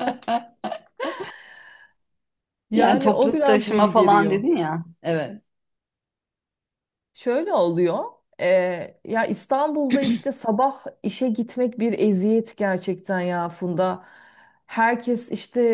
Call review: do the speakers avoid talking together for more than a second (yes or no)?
no